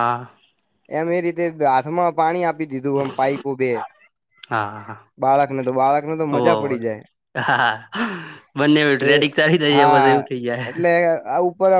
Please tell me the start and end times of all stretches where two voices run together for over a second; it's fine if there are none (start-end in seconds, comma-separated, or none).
none